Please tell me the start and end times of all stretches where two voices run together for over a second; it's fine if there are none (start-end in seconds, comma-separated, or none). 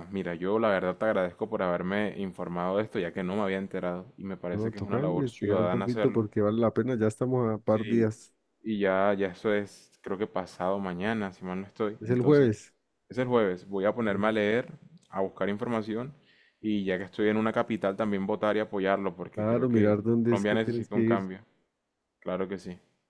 4.5-6.2, 19.3-21.2